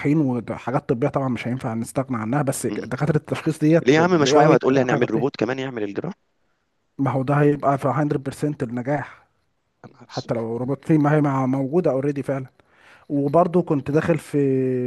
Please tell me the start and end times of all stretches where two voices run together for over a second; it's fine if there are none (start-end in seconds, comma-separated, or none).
3.8-5.4